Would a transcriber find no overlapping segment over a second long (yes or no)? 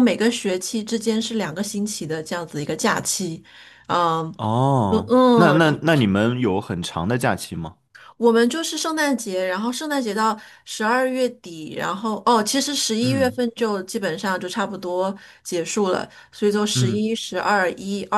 yes